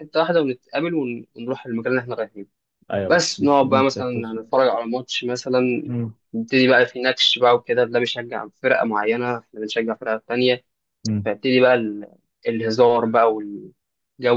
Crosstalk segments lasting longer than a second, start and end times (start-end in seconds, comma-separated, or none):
3.1-4.4